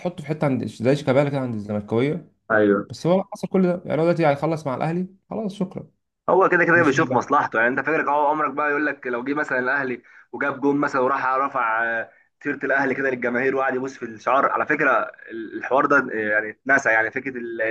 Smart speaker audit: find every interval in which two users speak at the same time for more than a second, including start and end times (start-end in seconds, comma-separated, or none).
none